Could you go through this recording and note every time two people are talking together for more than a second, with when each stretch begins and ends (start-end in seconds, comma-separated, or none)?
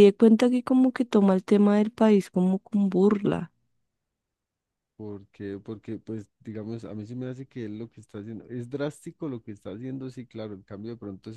none